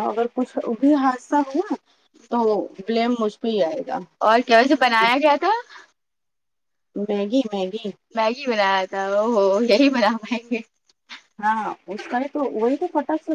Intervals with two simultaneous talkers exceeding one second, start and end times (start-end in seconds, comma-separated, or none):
none